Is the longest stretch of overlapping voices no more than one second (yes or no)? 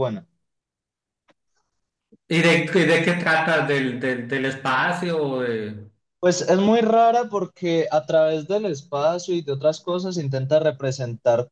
yes